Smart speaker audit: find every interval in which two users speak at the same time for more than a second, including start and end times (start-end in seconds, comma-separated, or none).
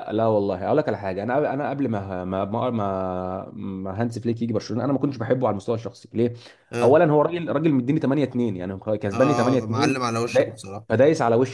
9.1-11.0